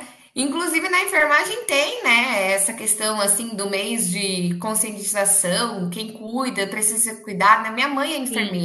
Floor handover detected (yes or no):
yes